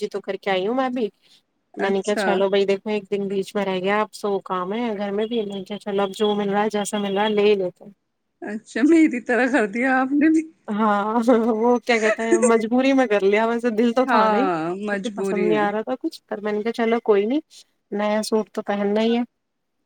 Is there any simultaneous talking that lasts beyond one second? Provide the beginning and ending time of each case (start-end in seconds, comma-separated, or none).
14.1-15.7